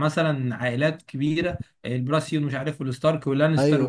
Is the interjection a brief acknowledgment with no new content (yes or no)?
no